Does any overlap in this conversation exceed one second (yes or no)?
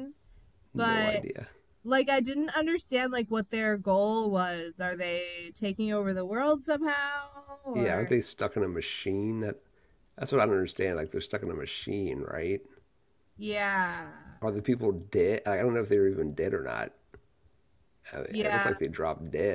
no